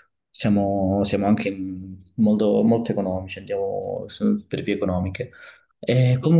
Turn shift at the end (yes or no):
no